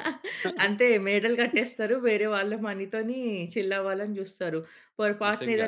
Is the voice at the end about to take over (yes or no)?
no